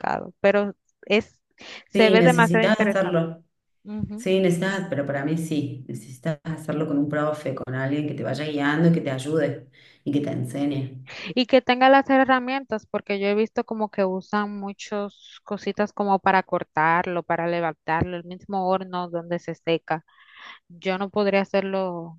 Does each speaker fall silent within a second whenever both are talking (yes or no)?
no